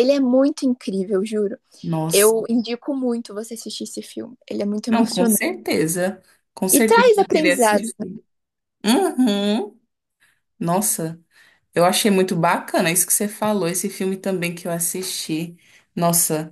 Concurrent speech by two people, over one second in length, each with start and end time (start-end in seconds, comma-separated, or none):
6.7-7.9